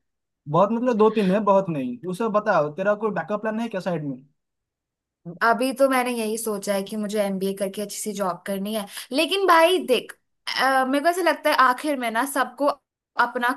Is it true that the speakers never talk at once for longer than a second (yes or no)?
yes